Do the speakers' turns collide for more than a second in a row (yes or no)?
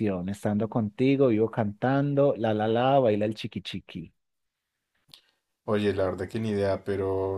no